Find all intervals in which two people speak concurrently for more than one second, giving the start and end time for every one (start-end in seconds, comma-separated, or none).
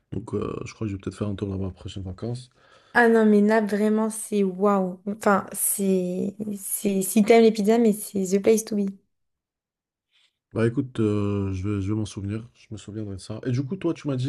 none